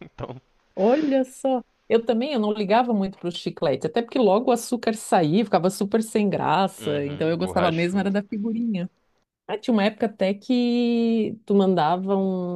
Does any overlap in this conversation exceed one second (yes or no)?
yes